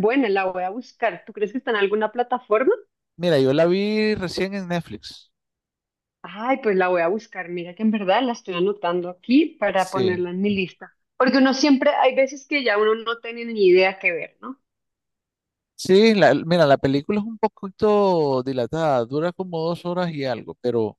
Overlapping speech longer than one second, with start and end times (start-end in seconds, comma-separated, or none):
none